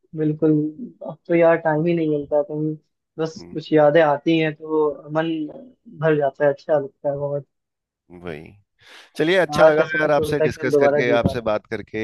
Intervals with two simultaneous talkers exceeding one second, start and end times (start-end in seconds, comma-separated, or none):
9.5-11.5